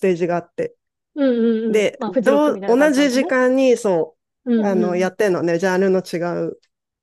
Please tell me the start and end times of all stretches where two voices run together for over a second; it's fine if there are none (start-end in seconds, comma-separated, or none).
1.7-3.3